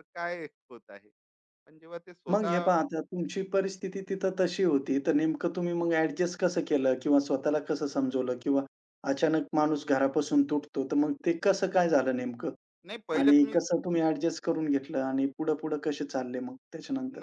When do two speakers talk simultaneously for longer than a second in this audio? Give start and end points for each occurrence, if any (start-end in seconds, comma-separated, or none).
none